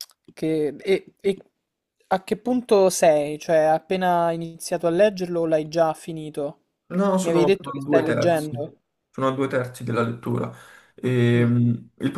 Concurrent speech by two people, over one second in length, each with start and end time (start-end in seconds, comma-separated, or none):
7.2-8.7